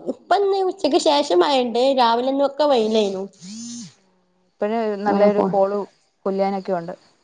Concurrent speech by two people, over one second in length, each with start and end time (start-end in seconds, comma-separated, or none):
none